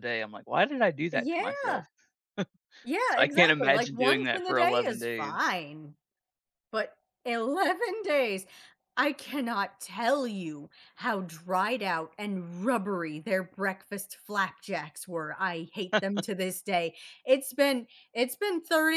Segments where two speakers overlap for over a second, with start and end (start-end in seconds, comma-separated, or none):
3.1-5.6